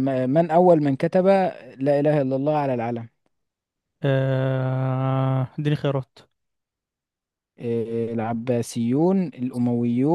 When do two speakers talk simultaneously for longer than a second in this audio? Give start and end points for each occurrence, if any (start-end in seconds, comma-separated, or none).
none